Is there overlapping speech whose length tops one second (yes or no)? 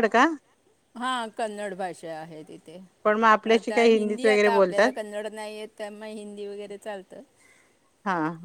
yes